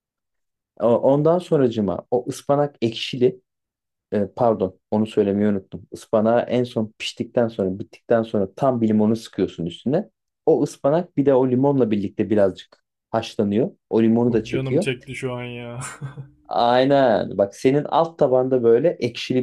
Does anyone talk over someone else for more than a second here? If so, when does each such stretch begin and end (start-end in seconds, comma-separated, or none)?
none